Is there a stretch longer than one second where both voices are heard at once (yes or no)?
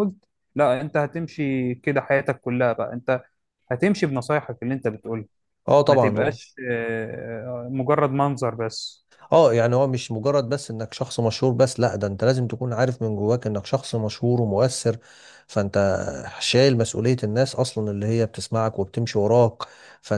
no